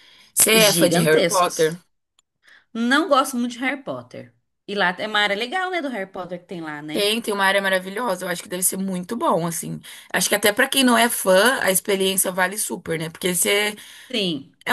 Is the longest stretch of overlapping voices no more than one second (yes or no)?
no